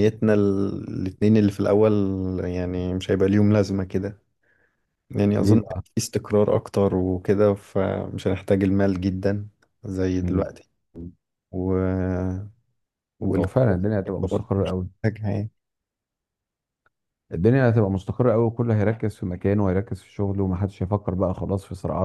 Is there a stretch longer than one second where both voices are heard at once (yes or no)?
yes